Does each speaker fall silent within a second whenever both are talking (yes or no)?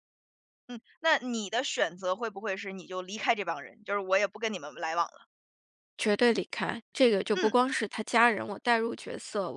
yes